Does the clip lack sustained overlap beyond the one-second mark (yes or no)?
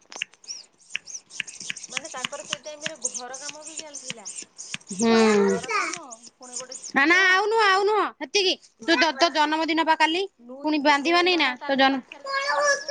yes